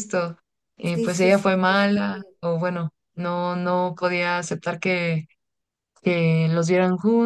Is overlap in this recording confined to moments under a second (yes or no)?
no